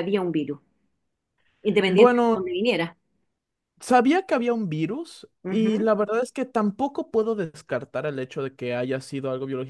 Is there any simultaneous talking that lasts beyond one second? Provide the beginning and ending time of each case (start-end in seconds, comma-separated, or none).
none